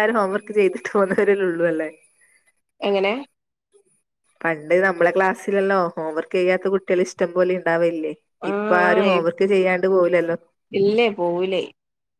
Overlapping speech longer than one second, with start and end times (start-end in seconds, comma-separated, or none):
none